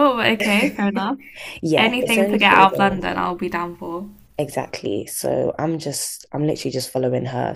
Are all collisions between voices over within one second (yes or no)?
no